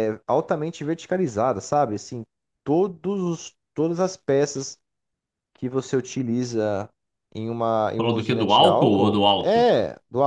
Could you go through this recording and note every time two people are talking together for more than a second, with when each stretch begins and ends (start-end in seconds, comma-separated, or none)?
8.0-9.7